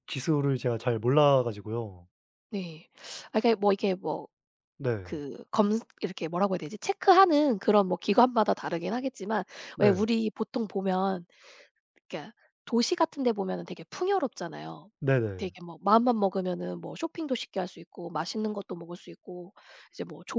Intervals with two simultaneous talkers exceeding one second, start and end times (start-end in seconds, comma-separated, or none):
none